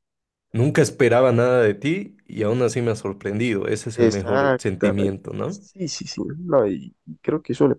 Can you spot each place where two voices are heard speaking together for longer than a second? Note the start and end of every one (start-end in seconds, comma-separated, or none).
4.0-5.6